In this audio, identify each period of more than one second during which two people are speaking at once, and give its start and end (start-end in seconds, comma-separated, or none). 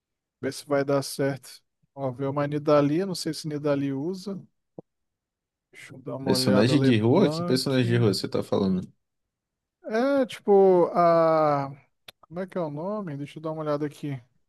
6.2-7.8